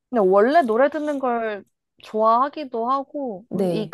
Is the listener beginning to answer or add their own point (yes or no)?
no